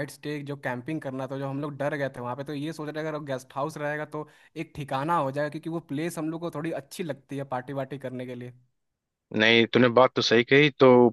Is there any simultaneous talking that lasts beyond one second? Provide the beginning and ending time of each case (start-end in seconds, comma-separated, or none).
none